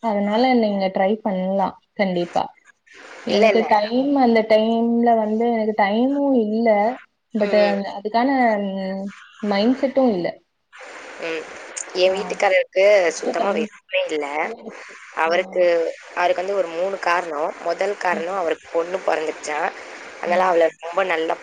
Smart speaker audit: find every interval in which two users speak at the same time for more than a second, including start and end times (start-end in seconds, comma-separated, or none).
none